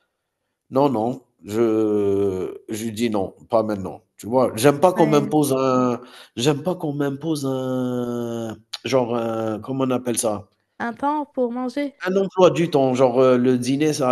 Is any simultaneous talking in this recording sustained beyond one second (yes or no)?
no